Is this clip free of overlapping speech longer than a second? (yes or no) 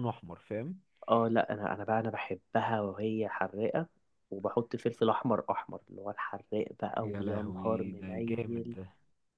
no